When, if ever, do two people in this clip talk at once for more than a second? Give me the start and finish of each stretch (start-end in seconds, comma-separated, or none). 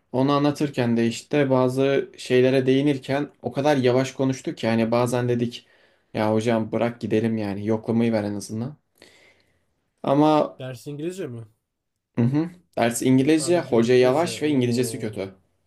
13.4-15.1